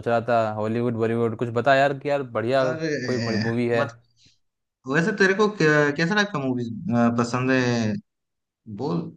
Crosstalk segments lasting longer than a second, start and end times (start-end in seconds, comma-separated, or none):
none